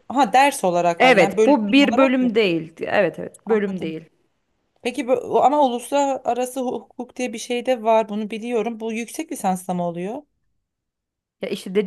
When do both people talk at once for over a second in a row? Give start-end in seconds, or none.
1.0-2.4